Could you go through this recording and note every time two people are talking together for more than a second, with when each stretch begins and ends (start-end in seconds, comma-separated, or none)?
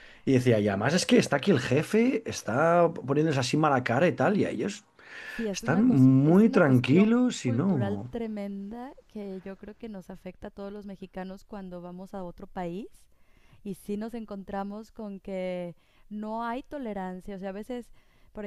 5.5-8.1